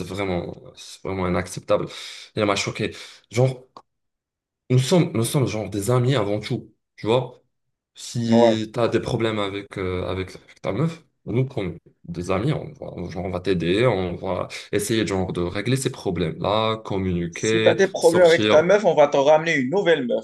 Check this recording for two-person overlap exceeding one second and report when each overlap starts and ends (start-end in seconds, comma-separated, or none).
17.3-18.7